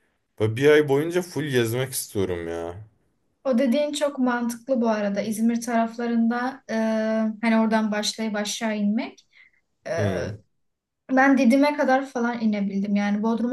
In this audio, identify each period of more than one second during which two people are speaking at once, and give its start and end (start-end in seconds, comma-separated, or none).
none